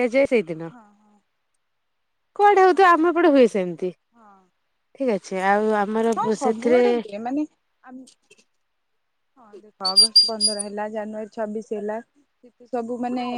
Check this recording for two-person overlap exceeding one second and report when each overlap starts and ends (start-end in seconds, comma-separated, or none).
none